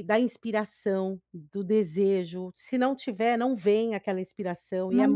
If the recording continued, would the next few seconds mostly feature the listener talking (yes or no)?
no